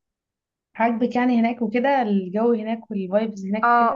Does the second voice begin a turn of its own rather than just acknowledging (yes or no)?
yes